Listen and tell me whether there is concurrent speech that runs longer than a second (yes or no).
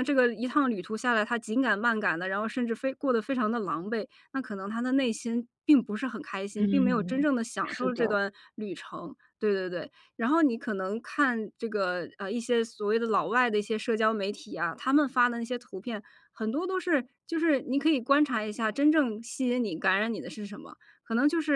yes